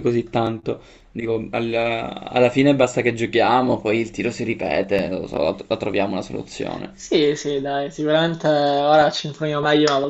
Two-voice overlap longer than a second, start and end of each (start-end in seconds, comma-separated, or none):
none